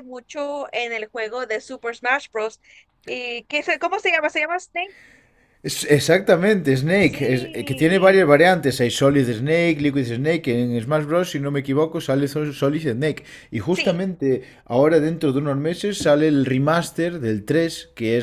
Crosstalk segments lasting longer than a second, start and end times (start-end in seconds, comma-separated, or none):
7.0-8.3